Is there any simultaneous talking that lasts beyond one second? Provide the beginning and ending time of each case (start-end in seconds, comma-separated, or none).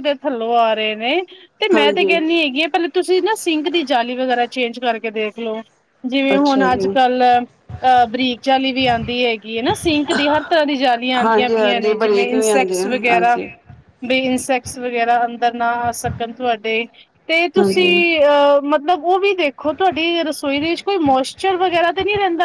11.2-13.3